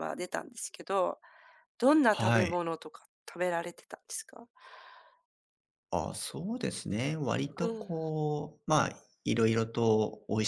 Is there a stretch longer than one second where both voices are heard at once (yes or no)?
no